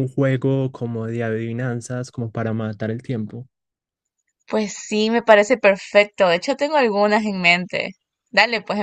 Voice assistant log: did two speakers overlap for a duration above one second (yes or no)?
no